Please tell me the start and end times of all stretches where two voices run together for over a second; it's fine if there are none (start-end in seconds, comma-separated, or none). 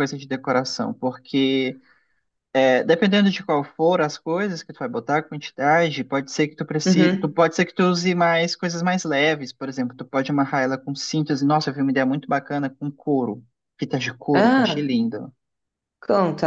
none